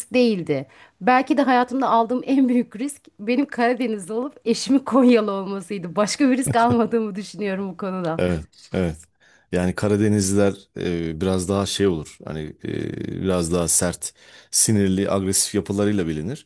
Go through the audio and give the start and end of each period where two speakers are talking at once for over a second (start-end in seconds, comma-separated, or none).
none